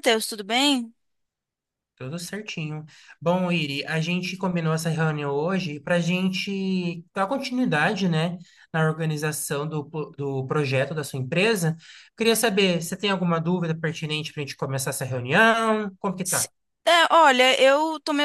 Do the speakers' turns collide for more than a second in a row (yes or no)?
no